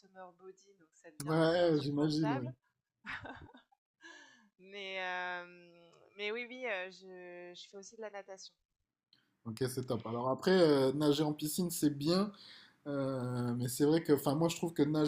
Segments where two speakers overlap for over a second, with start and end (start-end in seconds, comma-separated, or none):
1.2-2.5